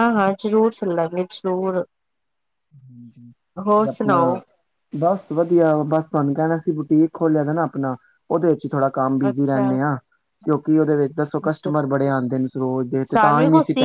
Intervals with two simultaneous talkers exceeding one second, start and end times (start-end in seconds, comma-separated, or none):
none